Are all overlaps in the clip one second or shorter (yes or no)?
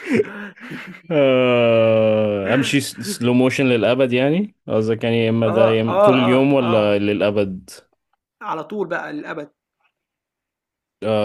no